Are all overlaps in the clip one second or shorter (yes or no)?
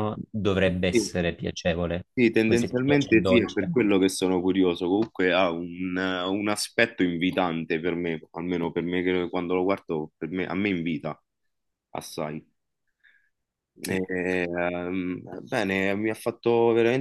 no